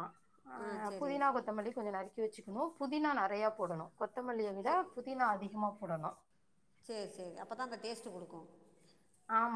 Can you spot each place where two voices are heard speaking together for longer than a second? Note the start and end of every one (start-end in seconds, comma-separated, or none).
none